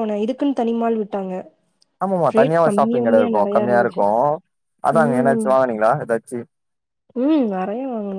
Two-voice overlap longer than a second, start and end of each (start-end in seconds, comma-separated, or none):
2.4-4.0